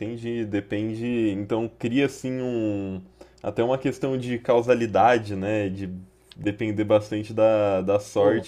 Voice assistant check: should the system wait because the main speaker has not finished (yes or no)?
yes